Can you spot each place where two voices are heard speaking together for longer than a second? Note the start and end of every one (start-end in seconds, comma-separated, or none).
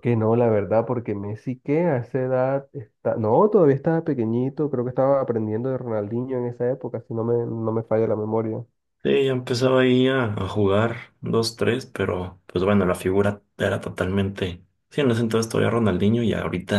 none